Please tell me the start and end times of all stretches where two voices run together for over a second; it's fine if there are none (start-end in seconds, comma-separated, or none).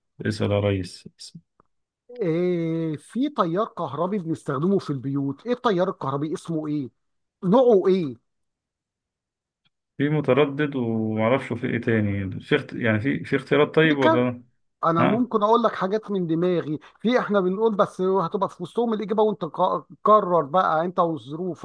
none